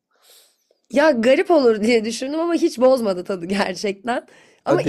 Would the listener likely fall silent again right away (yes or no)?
yes